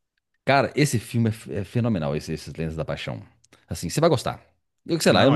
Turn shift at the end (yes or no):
no